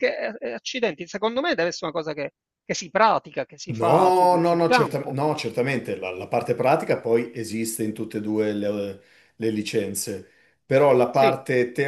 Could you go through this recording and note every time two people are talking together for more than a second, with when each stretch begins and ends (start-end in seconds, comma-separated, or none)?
3.7-5.2